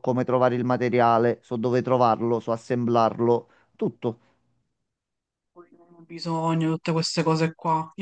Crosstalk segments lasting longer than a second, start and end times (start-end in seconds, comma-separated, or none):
none